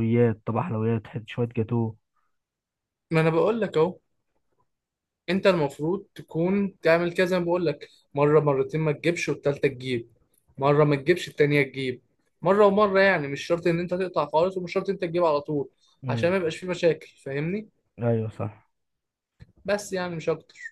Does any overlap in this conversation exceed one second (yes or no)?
no